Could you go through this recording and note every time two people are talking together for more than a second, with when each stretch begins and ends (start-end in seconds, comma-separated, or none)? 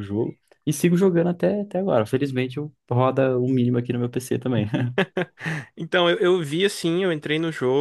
none